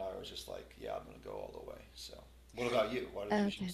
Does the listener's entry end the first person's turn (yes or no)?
yes